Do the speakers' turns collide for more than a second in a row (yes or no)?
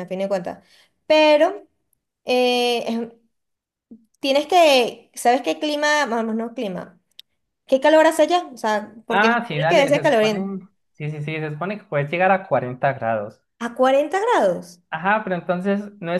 yes